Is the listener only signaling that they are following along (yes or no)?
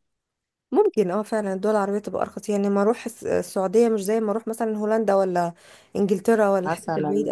no